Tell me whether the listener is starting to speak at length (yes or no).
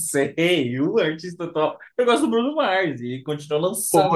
no